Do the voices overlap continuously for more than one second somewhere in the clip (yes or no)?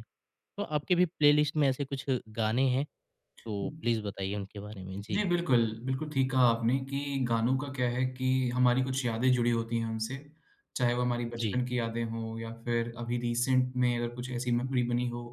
no